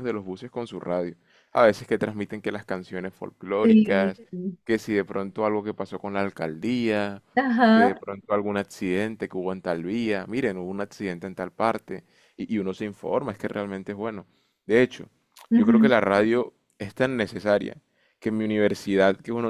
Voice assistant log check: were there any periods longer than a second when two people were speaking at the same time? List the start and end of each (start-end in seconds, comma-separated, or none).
none